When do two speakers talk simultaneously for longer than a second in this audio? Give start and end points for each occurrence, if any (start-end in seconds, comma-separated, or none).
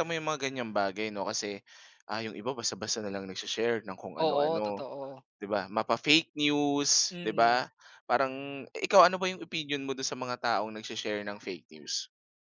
none